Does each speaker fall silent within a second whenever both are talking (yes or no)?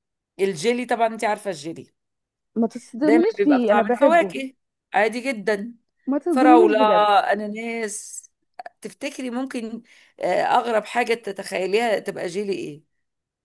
no